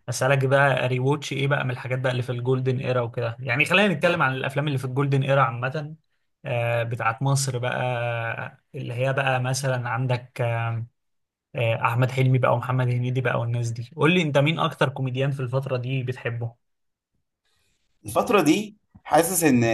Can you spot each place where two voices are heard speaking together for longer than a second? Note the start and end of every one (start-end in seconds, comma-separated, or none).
none